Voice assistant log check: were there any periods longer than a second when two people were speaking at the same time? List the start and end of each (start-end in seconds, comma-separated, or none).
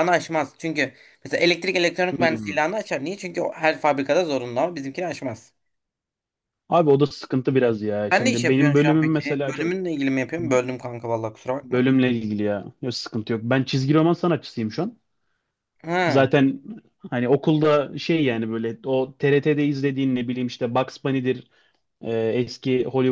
8.1-9.7